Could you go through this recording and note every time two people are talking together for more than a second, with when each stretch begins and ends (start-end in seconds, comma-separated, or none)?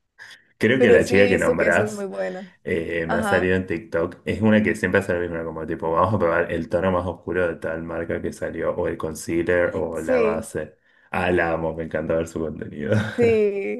0.8-2.1